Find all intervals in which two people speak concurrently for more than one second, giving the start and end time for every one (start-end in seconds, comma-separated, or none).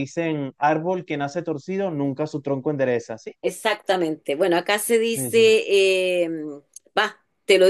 none